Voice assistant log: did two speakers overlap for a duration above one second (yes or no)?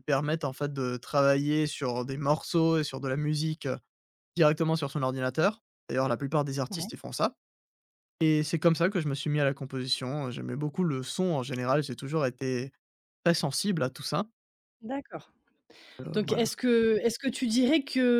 no